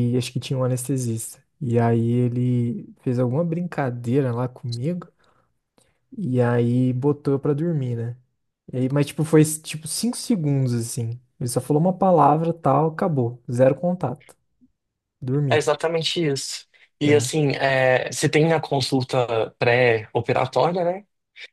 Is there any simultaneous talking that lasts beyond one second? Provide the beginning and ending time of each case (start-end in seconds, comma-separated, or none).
none